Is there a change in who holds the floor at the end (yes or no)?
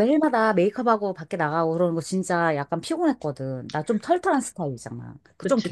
yes